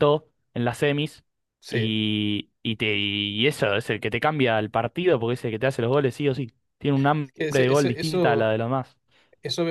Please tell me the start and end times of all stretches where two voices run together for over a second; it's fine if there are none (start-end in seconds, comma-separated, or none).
7.2-8.5